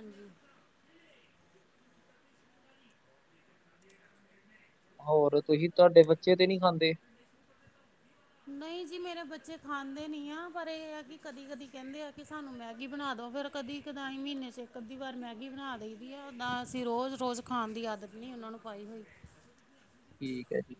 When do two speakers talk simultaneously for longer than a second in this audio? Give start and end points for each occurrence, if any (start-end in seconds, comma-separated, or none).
none